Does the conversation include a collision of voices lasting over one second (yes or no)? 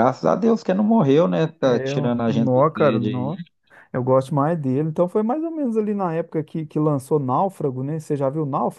yes